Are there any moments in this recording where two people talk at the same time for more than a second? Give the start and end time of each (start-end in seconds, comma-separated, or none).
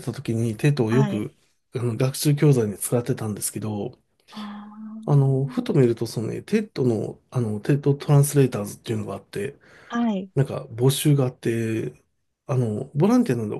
none